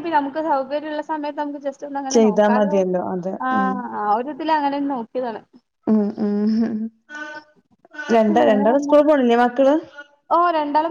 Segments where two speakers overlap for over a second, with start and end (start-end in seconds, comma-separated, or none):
none